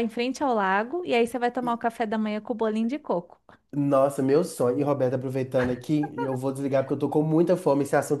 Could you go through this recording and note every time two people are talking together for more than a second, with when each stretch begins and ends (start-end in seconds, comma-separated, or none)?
none